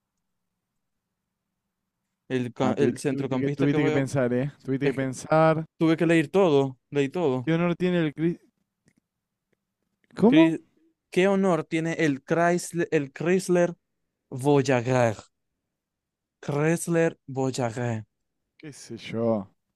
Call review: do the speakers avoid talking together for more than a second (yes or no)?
no